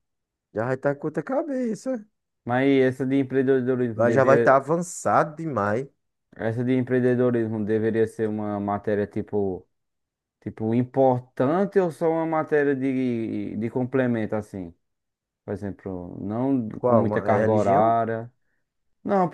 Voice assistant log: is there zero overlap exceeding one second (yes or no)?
no